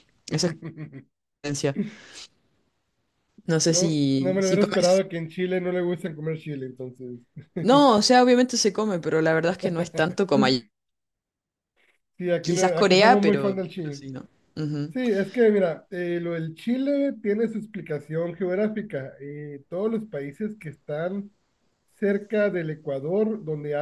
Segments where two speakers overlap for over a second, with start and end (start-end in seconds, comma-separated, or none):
3.7-5.0, 12.4-14.0